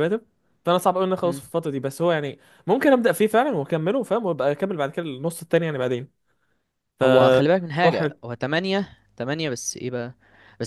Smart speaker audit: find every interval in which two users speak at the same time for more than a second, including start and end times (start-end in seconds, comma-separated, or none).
none